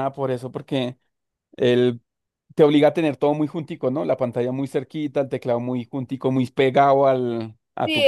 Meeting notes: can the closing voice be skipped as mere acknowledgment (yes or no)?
no